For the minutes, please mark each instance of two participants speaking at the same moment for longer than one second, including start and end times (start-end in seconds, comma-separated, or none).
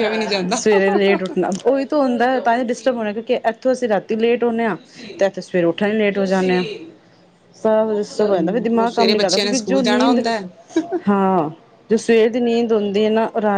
8.3-10.2